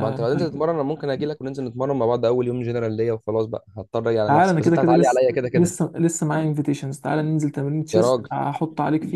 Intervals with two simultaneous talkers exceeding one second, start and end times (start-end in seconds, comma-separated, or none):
4.3-5.7